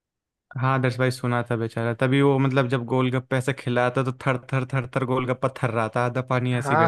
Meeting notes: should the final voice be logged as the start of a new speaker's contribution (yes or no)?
yes